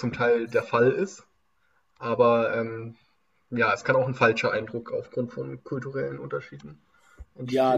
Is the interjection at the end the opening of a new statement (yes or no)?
yes